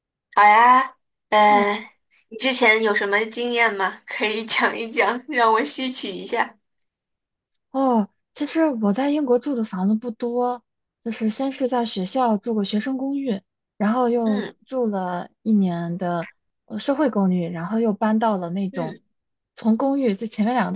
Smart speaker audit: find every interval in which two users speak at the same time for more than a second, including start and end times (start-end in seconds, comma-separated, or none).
none